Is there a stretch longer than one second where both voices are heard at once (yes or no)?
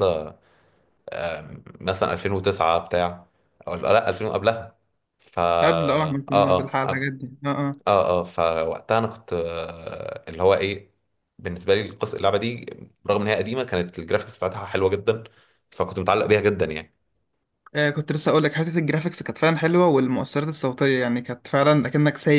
yes